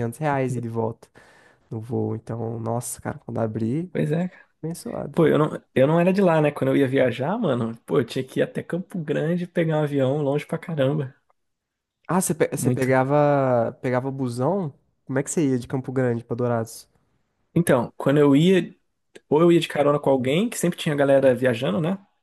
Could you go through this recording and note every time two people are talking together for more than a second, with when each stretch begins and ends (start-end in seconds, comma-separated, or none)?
none